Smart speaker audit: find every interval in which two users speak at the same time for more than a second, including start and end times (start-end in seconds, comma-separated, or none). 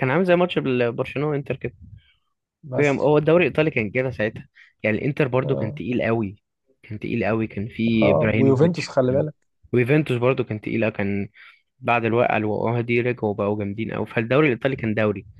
8.0-9.2